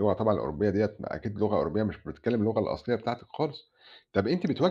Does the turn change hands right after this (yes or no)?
no